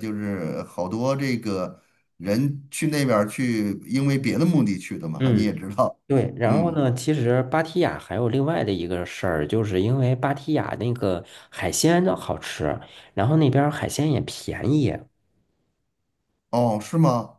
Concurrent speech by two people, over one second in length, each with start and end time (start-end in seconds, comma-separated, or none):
none